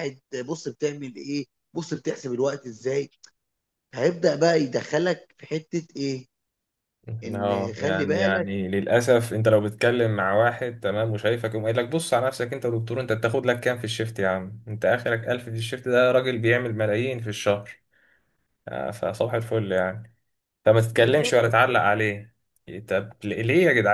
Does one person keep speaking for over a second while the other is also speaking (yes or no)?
yes